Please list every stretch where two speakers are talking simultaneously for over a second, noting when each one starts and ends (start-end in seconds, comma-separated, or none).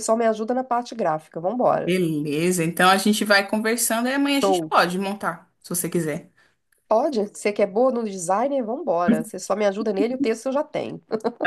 none